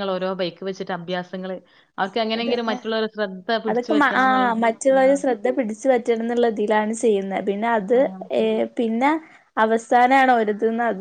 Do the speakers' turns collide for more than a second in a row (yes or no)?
no